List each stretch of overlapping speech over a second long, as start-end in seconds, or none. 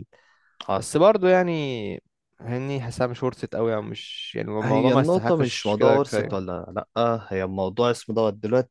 4.6-6.4